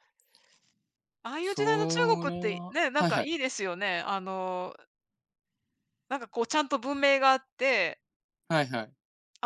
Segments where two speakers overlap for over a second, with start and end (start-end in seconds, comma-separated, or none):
1.4-3.3